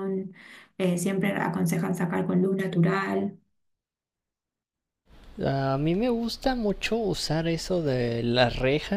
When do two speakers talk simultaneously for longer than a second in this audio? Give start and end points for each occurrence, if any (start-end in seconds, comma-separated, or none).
none